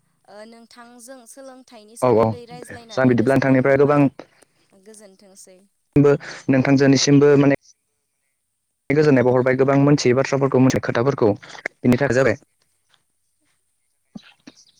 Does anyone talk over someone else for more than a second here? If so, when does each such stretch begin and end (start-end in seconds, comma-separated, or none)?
2.1-4.0